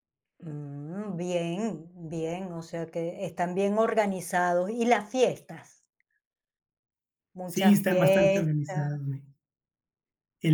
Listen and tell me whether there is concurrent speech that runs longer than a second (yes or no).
yes